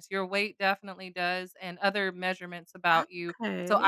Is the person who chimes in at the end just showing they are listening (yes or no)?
yes